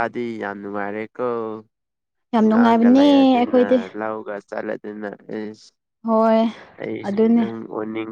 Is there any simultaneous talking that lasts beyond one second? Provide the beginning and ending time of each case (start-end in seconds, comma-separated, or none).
2.4-3.6